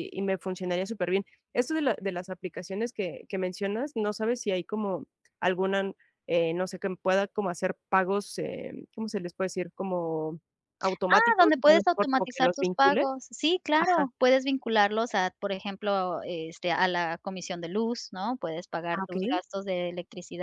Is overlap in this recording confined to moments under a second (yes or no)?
no